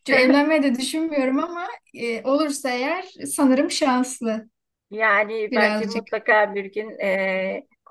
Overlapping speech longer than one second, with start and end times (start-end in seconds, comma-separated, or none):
none